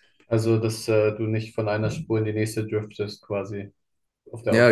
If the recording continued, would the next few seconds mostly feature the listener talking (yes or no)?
yes